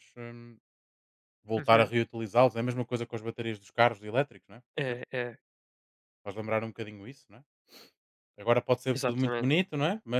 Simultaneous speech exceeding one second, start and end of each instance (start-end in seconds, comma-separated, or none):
none